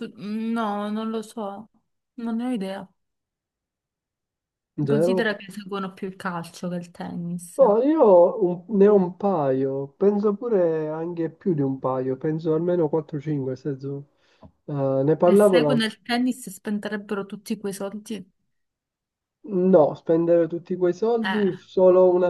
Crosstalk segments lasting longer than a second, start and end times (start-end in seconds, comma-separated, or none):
none